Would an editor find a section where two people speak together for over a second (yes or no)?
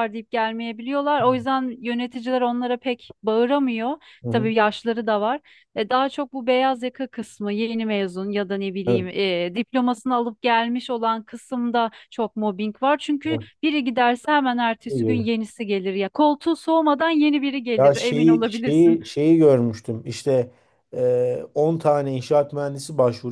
yes